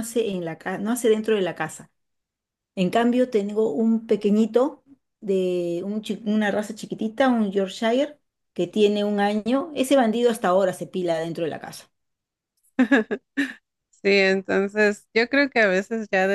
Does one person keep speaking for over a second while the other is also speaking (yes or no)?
no